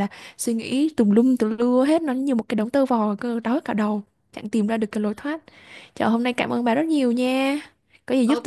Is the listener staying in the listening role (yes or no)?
no